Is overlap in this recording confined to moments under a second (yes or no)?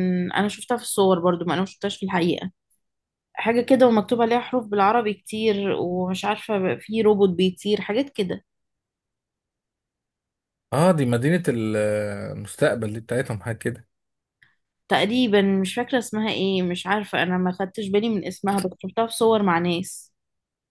yes